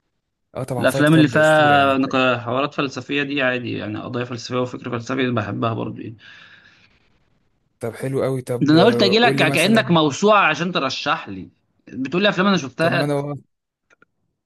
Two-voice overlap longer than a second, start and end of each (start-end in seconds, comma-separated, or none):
0.8-2.2, 8.6-9.9